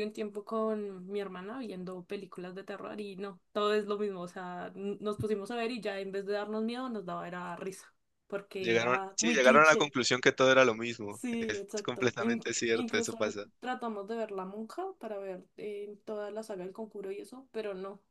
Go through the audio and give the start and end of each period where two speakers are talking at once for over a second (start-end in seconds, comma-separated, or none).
8.6-9.9, 11.1-13.2